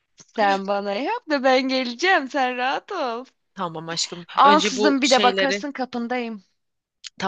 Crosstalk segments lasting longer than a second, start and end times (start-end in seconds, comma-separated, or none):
4.3-5.6